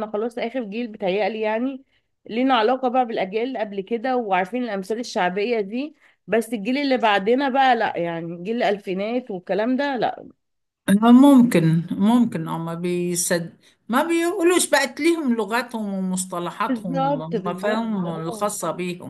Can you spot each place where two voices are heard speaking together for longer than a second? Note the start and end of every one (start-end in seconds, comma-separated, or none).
16.7-18.5